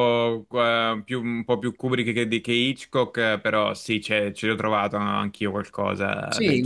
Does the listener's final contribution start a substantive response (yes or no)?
yes